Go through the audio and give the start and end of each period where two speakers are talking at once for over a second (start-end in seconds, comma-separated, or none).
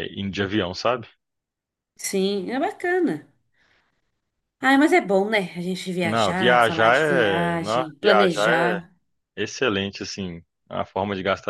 6.0-8.8